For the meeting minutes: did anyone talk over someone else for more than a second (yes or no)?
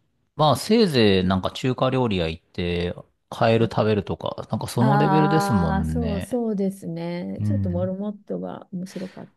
yes